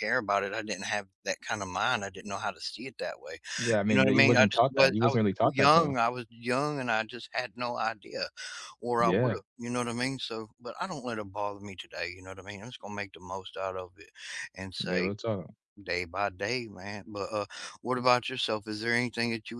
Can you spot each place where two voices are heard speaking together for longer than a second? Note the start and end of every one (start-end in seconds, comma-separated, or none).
3.9-6.0